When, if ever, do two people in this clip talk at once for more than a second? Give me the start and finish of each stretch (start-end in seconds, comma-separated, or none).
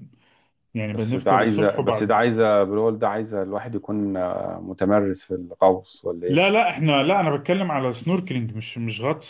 0.9-2.2